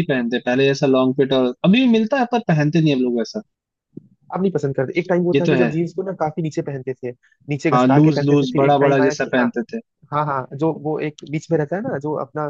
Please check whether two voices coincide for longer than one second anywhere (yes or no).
yes